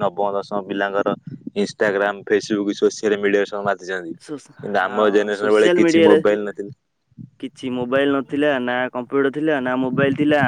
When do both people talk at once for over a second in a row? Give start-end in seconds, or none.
4.2-6.2